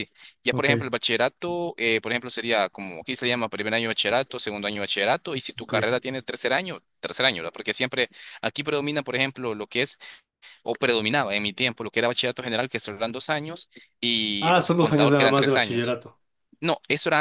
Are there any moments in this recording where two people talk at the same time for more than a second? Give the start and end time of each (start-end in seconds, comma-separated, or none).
14.4-16.0